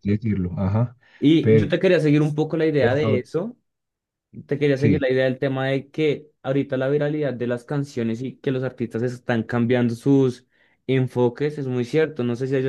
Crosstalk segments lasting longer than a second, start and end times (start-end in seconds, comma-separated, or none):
none